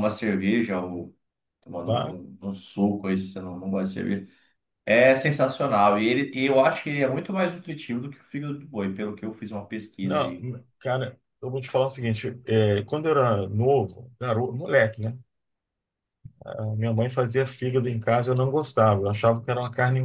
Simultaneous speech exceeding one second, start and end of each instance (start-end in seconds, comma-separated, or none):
none